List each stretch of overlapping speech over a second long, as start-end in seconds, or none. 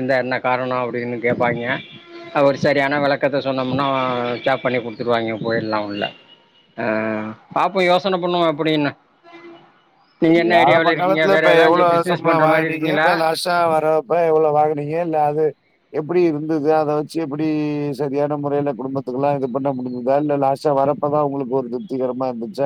10.9-13.1